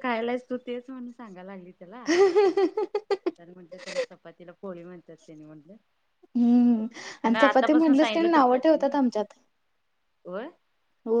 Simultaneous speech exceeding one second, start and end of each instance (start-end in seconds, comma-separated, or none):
7.3-8.9